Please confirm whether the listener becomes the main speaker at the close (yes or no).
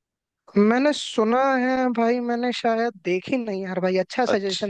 yes